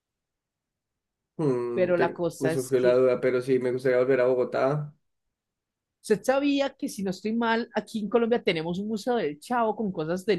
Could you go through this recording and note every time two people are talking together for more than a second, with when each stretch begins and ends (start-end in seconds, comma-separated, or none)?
1.7-3.0